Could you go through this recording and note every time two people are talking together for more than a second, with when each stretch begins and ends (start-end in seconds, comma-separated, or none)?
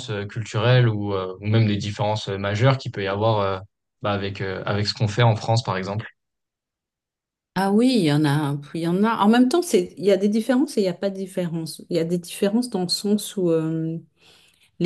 none